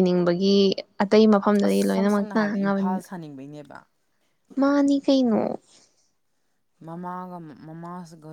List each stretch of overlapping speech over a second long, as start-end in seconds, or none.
1.6-3.0